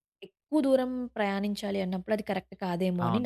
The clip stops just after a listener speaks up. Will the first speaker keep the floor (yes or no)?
no